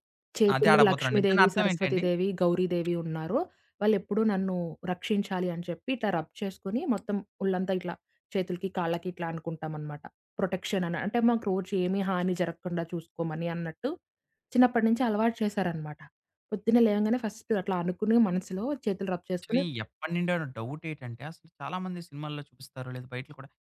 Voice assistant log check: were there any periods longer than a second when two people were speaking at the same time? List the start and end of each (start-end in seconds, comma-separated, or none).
0.6-2.0